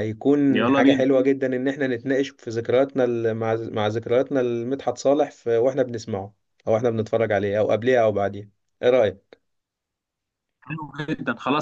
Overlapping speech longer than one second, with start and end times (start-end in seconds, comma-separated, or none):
none